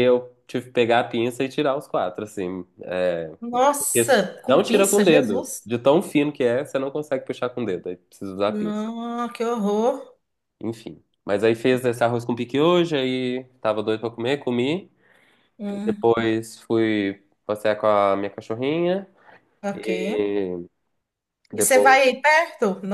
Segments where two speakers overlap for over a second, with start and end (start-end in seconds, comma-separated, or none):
3.8-5.7